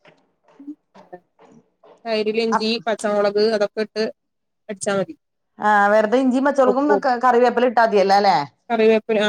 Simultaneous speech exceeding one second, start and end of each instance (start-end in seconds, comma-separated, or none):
none